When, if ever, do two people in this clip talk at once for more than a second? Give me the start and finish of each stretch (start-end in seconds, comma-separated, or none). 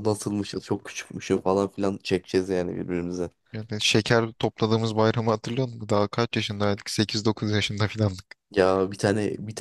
none